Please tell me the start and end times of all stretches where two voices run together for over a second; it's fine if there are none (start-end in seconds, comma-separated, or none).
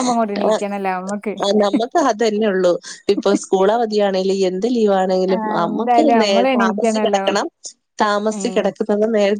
5.3-7.2